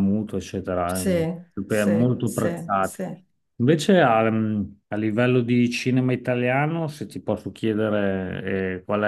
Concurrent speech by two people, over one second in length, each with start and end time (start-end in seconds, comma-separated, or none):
0.9-3.0